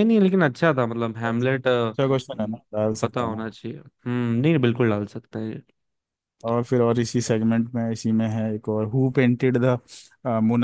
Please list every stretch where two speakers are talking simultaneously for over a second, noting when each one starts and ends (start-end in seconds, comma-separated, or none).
none